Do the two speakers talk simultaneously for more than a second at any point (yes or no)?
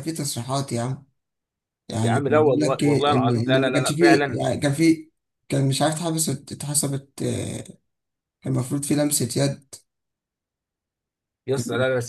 yes